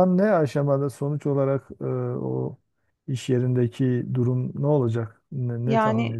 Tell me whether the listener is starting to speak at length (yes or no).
yes